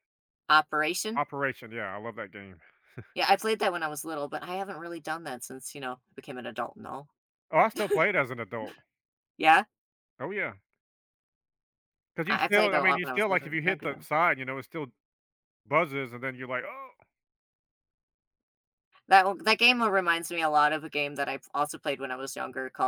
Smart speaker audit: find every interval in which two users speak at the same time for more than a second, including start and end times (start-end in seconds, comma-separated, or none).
12.3-14.1